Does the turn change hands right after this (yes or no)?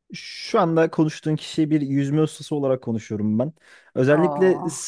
no